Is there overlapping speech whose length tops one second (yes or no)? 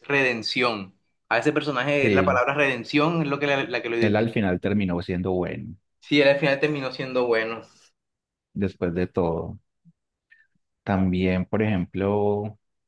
no